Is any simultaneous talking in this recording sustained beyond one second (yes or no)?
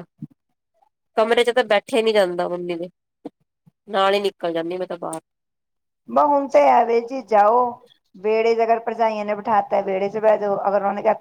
no